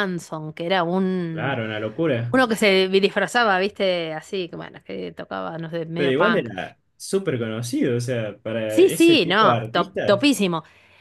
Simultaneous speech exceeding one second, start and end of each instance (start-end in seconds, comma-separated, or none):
8.7-10.3